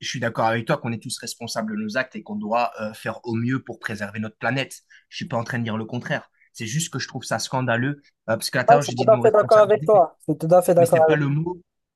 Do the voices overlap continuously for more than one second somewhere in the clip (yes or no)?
yes